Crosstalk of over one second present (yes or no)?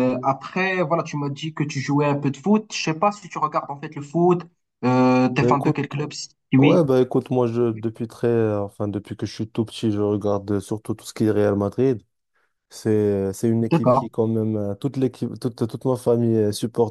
no